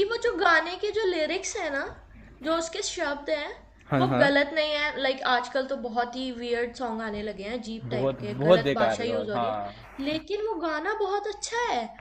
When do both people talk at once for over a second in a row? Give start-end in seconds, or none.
7.9-9.7